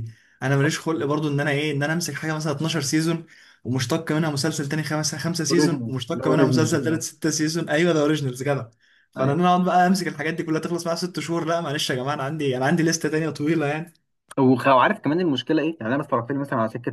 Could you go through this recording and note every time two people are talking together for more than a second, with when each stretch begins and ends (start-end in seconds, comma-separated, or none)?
5.5-7.0